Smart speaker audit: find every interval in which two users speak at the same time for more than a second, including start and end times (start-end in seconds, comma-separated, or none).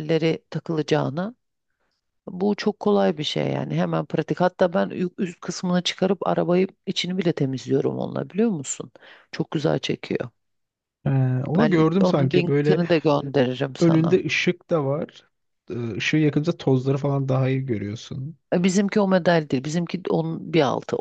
11.6-12.8